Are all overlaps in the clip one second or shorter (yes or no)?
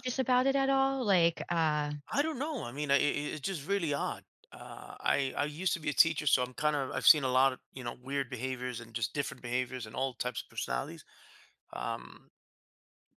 yes